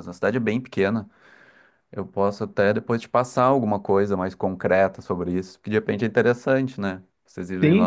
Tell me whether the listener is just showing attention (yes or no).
no